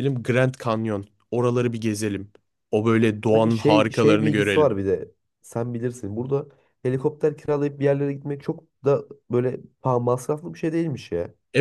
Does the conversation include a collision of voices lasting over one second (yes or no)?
yes